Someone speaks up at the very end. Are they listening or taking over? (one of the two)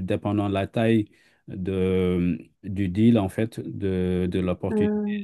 listening